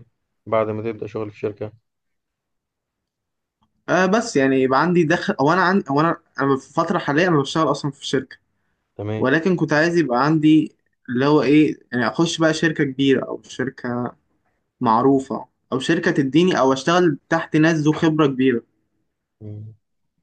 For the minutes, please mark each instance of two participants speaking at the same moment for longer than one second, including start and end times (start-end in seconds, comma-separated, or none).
none